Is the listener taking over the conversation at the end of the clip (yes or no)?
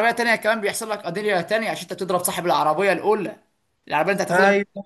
no